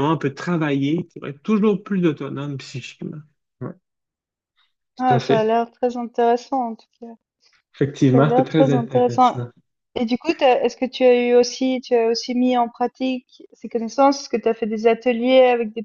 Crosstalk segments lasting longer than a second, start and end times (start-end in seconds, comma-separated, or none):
8.1-9.4